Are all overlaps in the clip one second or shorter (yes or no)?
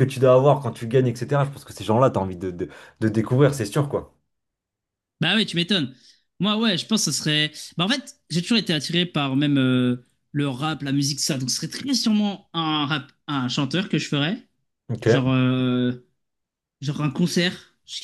yes